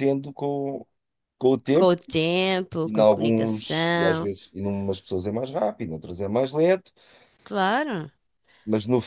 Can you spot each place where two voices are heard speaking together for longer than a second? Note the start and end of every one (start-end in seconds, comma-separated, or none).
2.8-4.3